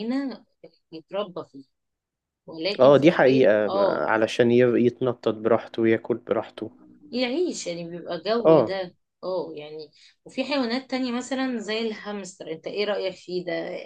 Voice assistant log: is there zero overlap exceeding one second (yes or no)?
no